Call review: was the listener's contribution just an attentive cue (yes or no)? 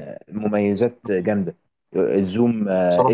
yes